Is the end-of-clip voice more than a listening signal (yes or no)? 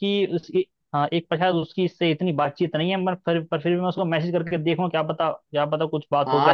yes